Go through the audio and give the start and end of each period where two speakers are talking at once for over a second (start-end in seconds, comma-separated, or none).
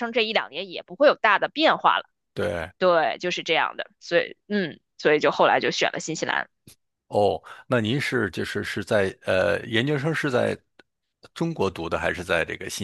none